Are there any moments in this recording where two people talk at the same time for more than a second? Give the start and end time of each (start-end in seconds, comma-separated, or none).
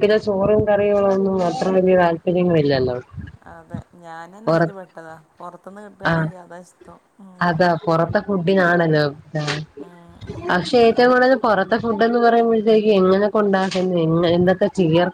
none